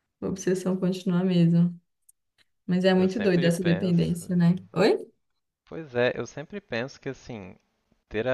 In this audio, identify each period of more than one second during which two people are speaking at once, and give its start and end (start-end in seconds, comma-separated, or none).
2.9-4.8